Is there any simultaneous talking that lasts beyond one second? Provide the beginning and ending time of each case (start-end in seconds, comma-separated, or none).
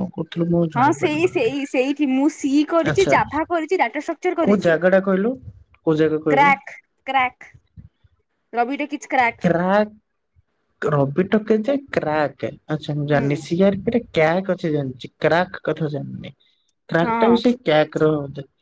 0.8-3.2